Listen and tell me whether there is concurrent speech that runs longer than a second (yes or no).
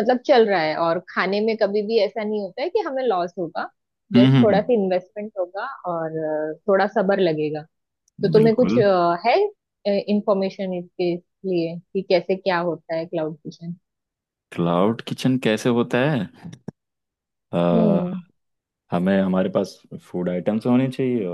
no